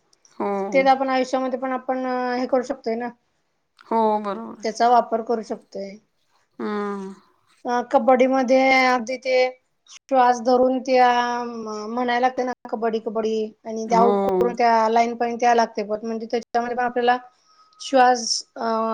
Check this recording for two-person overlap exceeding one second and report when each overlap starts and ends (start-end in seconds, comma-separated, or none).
none